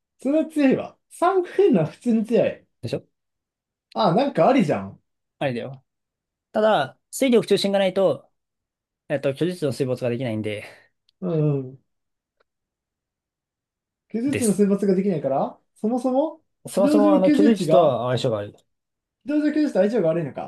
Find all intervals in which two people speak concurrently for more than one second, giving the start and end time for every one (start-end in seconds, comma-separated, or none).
16.8-18.0